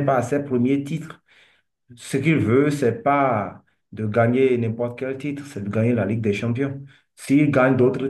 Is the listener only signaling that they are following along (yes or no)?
yes